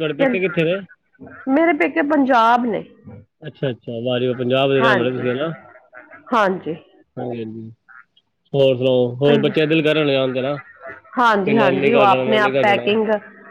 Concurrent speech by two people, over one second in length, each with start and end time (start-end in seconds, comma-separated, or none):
11.5-12.8